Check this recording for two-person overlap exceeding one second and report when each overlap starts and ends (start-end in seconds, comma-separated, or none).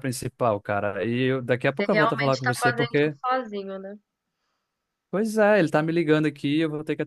1.8-3.1